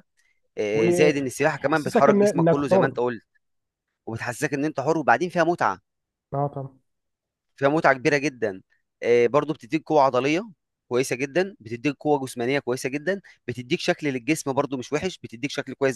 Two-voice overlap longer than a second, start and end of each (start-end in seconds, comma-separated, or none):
0.7-2.9